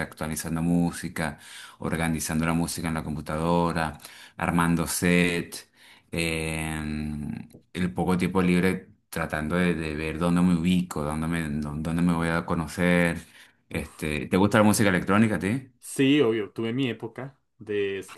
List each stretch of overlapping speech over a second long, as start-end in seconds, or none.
none